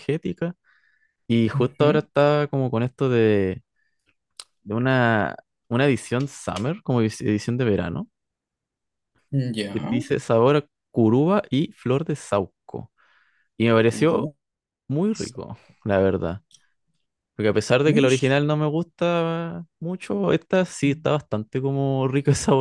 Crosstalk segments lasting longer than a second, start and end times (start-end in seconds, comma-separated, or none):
none